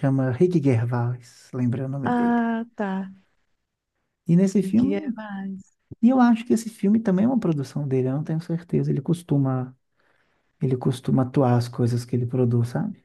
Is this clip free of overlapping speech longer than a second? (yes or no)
yes